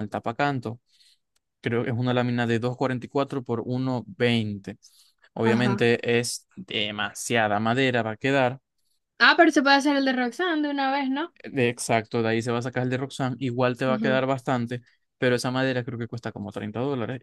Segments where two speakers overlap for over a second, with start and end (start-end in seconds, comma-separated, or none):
none